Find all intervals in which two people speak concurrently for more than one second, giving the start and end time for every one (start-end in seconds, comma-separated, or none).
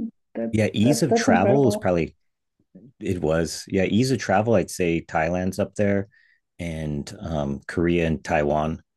0.5-1.9